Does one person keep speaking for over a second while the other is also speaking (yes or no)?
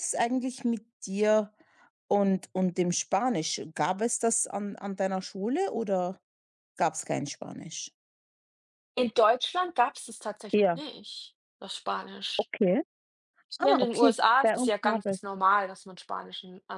yes